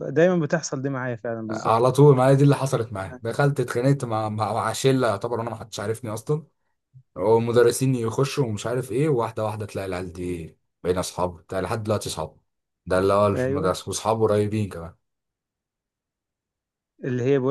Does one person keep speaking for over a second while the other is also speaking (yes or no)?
no